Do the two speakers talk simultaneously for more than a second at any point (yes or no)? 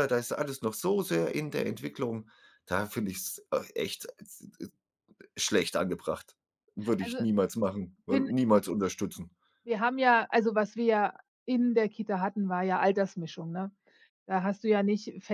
no